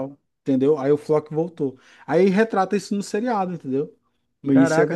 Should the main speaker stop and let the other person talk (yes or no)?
yes